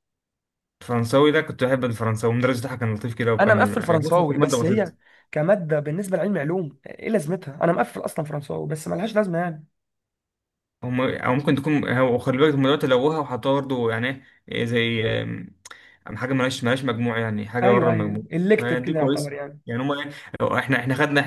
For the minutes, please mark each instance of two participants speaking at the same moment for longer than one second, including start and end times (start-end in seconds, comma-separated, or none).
3.4-4.9, 17.6-19.6